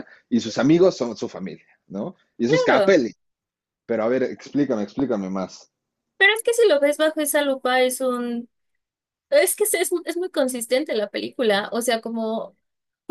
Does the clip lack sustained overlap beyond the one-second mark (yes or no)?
yes